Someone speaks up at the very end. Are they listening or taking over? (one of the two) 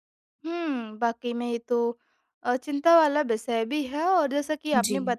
listening